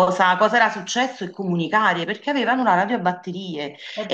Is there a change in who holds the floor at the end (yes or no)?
no